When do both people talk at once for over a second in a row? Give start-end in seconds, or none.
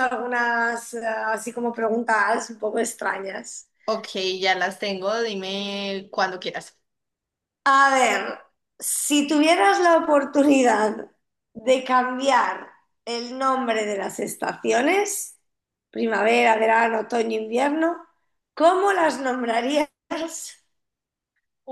none